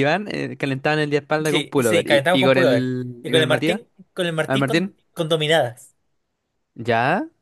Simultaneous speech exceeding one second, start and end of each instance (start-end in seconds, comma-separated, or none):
1.4-3.8